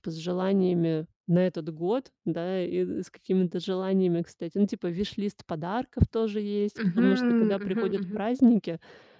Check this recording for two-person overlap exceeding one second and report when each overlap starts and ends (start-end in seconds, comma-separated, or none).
6.8-8.3